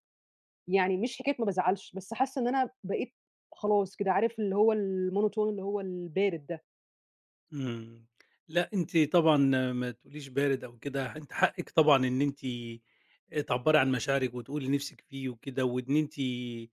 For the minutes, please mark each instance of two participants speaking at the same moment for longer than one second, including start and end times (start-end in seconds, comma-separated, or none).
none